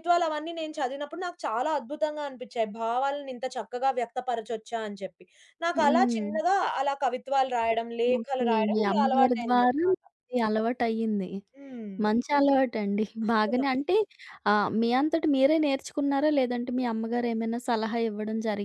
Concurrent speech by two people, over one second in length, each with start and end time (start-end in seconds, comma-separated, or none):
8.2-10.0